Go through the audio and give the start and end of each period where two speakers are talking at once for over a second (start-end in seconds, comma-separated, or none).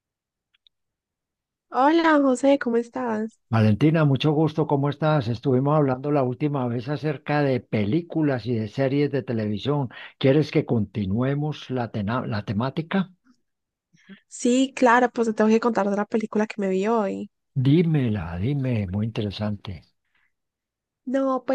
none